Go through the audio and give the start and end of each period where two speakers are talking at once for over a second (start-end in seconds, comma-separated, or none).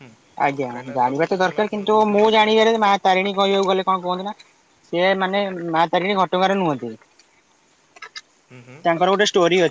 0.7-2.9